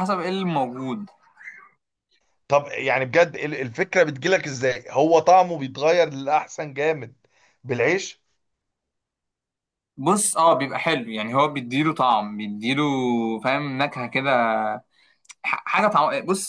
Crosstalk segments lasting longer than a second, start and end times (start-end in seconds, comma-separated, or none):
none